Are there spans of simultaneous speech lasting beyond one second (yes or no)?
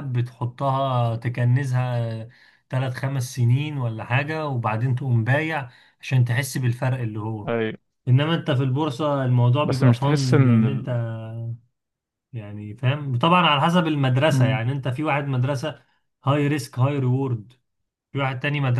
yes